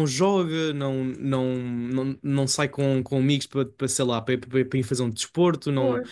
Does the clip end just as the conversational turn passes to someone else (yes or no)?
no